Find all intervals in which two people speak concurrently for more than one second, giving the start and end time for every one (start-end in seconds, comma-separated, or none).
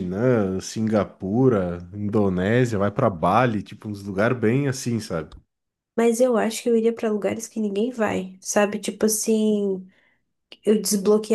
none